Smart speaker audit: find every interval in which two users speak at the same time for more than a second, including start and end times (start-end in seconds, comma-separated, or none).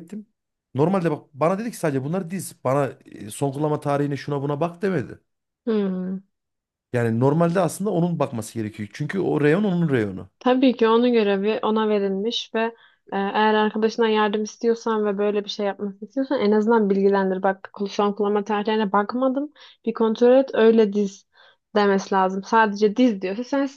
none